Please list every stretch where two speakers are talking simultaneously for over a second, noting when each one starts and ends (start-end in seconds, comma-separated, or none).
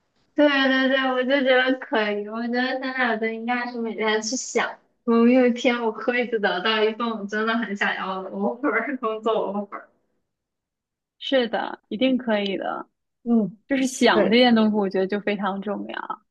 none